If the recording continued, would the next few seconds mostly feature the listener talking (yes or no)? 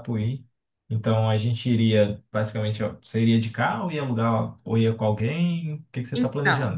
yes